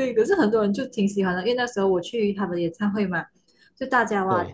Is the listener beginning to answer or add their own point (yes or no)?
no